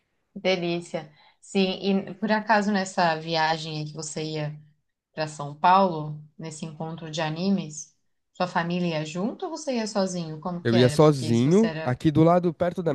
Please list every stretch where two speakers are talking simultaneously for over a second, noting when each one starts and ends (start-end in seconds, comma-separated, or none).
10.6-12.0